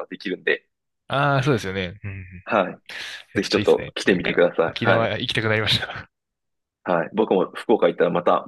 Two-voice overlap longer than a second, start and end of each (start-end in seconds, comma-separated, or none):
3.4-5.1